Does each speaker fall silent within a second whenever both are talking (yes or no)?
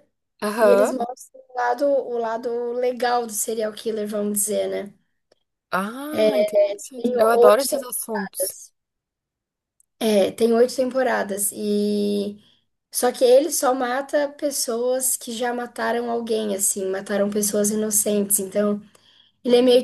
no